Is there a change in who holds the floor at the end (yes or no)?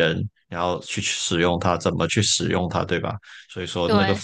no